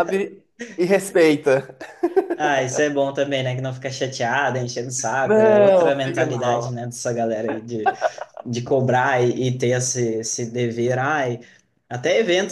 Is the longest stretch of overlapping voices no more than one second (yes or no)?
no